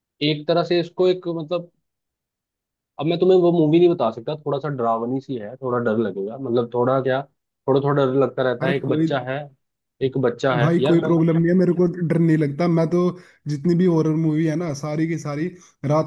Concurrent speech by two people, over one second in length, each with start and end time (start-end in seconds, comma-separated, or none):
none